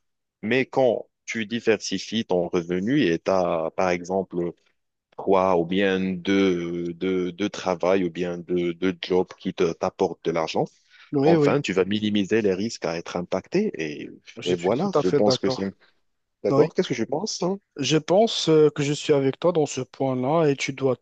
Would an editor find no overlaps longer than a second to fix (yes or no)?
no